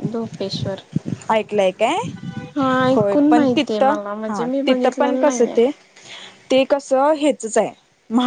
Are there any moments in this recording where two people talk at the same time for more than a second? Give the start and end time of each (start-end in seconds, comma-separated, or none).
2.9-5.6